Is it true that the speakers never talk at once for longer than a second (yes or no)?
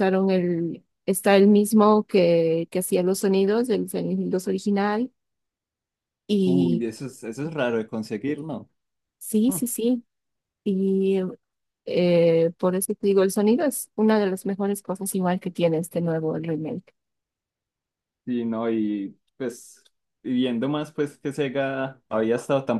yes